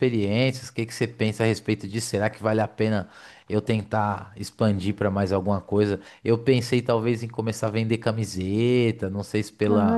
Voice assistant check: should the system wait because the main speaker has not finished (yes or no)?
yes